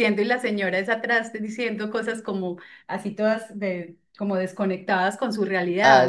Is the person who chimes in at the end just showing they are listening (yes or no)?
no